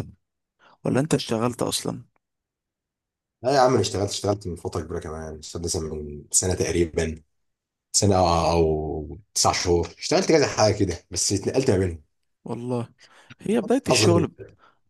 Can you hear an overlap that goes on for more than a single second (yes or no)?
no